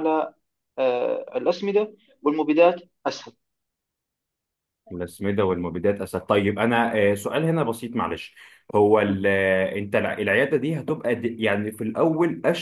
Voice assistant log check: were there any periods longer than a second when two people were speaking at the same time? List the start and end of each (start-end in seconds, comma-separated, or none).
none